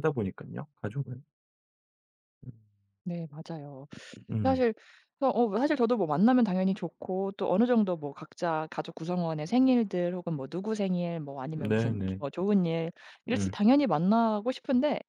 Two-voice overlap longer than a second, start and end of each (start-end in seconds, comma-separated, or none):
none